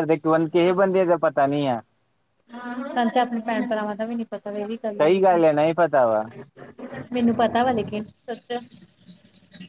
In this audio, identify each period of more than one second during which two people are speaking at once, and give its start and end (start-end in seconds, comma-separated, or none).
none